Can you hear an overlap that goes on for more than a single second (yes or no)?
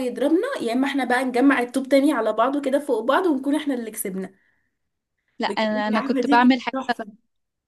yes